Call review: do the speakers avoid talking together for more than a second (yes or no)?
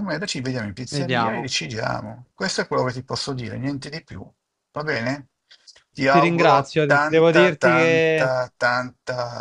no